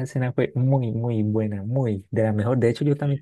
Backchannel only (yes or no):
yes